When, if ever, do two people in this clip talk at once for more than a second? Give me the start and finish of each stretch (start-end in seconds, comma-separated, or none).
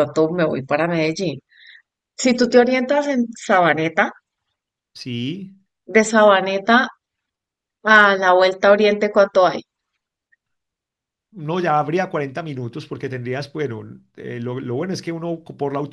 none